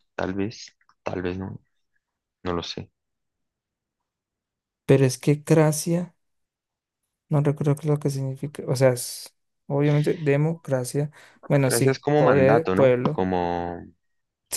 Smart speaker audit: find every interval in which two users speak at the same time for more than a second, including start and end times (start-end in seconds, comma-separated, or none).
11.7-13.2